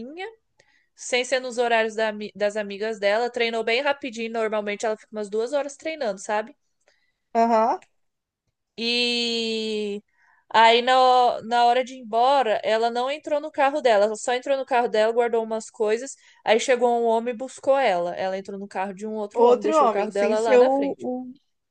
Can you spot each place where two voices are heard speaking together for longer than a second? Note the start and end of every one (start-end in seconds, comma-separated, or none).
19.3-21.1